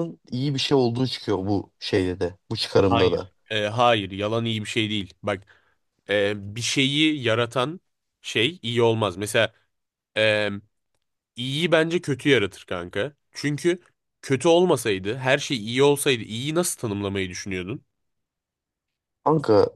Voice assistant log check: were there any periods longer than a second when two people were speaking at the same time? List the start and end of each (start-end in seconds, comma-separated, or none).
none